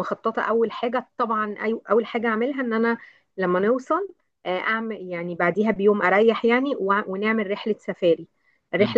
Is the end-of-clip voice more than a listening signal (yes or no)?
no